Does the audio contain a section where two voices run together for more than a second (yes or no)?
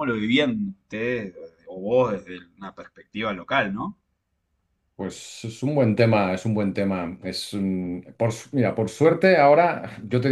no